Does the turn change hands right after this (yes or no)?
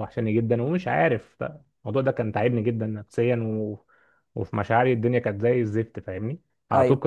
no